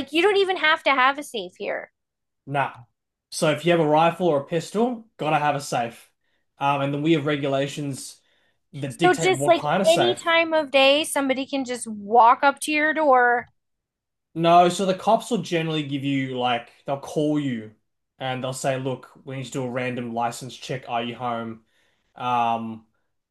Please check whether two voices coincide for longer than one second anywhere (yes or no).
yes